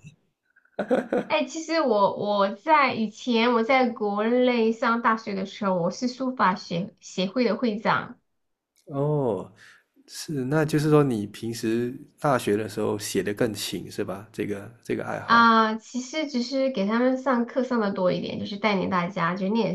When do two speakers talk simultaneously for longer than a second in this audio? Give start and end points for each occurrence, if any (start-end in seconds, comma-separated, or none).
none